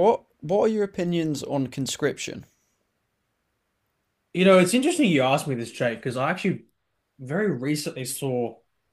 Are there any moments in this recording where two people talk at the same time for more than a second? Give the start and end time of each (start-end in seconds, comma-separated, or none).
none